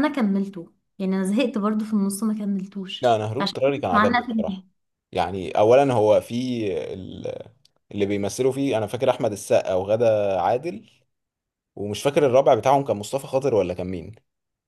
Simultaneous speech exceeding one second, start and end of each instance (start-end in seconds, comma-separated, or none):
3.0-4.6